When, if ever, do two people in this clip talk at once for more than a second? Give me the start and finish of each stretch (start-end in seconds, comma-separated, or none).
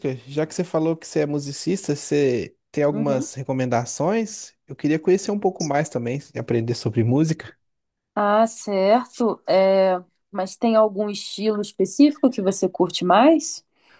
none